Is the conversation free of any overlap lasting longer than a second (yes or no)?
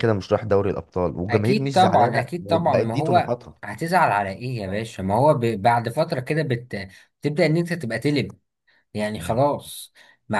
no